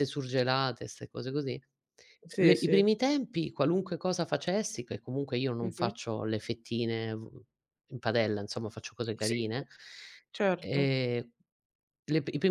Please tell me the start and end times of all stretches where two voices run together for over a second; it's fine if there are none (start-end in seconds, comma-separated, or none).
none